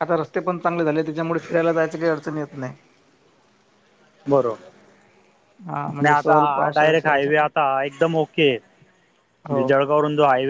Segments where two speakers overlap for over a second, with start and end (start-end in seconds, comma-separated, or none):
5.9-7.5